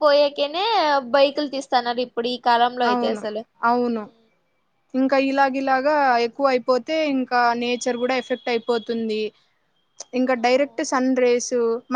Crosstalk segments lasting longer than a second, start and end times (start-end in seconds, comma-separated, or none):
none